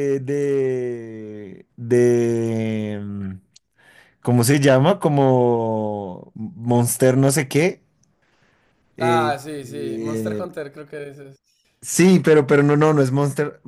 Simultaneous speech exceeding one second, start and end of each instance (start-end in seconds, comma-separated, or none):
9.0-10.5